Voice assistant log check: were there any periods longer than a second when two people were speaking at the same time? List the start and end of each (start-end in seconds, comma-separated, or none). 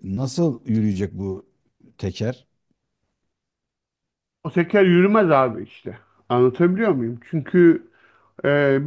none